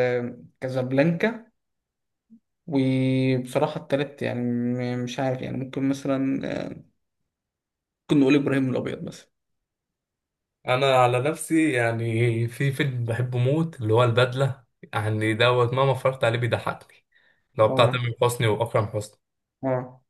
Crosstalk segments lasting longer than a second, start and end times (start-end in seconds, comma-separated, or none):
none